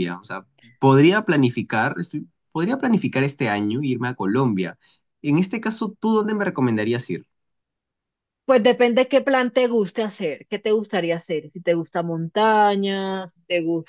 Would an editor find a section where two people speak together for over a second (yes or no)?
no